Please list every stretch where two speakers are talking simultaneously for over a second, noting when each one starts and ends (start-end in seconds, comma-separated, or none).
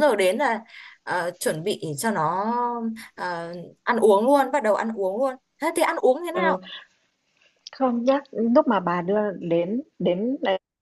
none